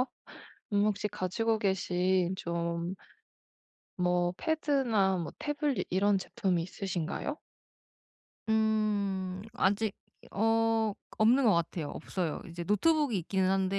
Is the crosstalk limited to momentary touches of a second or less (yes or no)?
yes